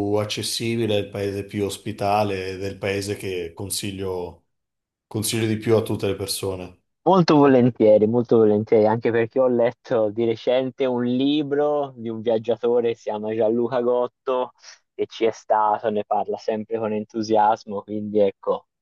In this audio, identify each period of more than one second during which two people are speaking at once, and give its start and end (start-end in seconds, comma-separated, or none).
none